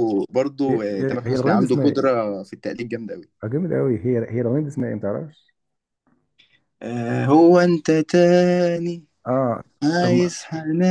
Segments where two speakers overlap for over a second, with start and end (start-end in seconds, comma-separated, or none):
0.7-2.2